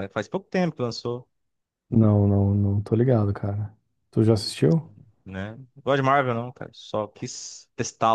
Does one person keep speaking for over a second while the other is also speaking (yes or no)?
no